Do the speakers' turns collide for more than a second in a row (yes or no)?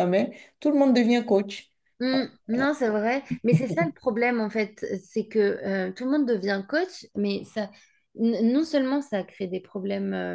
no